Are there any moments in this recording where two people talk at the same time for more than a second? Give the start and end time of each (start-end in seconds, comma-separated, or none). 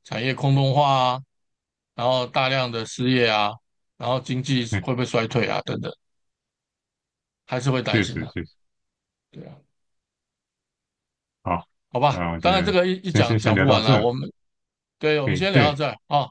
12.1-14.1